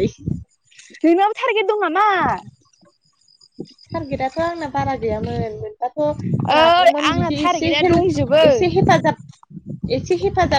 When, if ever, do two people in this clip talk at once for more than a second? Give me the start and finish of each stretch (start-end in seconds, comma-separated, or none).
6.6-8.4